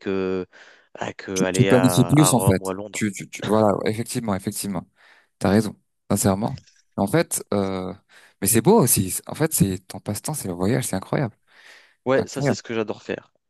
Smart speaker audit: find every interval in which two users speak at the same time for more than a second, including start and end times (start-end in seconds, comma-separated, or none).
1.3-3.0